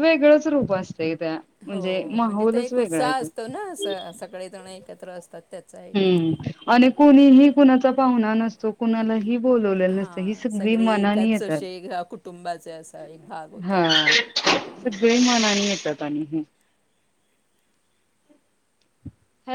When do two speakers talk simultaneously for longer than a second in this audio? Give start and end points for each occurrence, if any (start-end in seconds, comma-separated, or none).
9.9-11.6